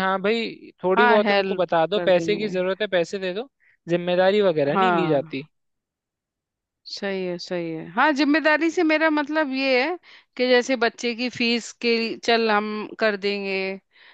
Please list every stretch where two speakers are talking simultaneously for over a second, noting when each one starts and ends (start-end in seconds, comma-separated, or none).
1.0-2.6